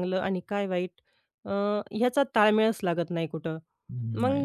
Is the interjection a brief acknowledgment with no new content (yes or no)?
yes